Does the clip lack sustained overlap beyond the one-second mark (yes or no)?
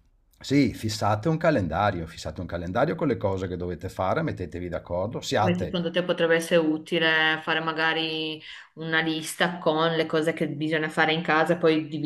yes